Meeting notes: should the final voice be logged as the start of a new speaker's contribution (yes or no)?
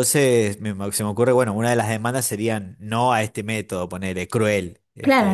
yes